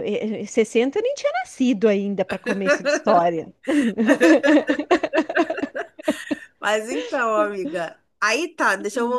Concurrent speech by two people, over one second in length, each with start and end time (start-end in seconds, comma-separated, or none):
none